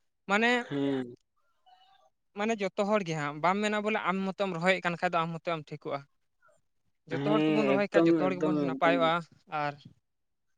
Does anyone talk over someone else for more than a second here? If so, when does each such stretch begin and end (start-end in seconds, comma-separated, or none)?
7.2-9.1